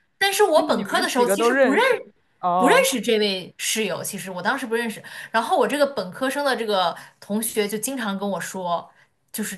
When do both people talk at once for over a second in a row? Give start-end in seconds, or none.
0.6-1.8